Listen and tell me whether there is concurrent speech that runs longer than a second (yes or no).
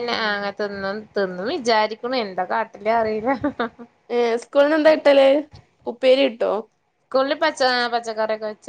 no